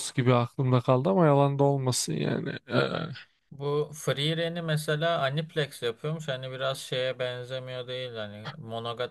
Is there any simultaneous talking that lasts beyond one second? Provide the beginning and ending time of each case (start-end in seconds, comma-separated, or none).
none